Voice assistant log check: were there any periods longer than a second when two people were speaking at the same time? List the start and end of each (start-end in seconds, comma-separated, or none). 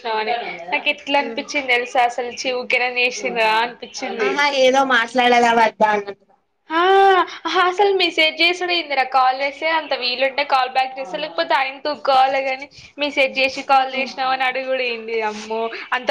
none